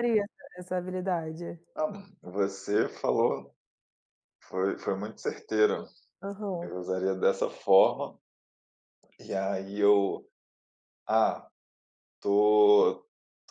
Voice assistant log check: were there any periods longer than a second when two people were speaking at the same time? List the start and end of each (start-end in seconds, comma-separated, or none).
none